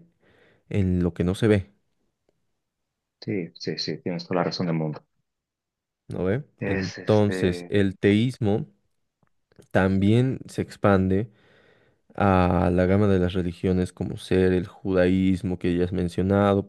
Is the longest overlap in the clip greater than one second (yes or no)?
yes